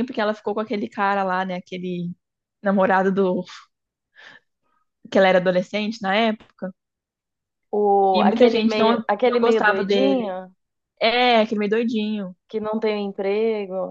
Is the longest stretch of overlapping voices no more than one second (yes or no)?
no